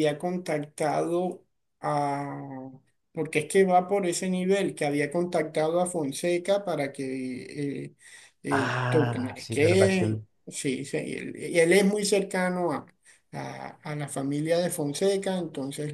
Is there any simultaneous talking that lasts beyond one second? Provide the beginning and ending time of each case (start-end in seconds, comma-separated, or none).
8.5-10.2